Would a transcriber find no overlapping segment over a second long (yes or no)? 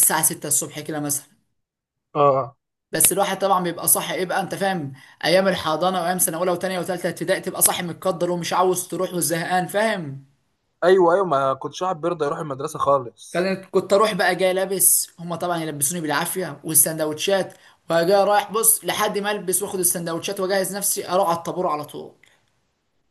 yes